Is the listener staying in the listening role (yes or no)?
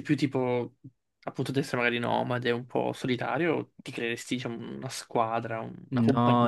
no